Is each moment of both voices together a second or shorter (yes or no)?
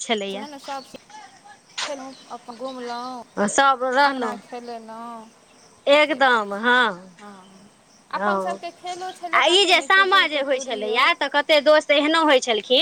yes